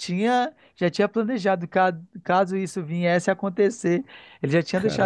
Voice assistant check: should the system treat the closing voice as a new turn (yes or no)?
no